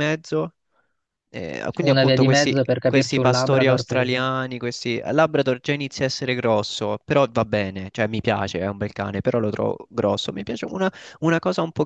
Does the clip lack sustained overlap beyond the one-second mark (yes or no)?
no